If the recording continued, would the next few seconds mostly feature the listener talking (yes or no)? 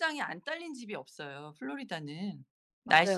yes